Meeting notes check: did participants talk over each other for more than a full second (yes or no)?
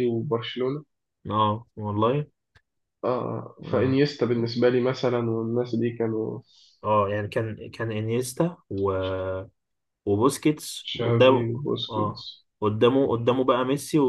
yes